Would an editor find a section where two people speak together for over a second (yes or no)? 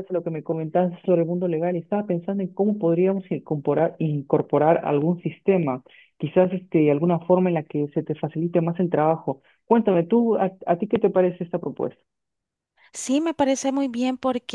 no